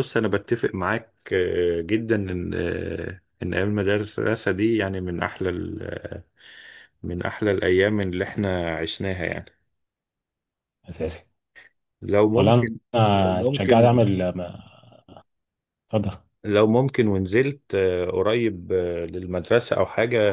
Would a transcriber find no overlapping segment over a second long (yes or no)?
no